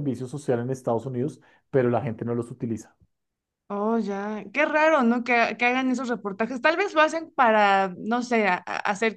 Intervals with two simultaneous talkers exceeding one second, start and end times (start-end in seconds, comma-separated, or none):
none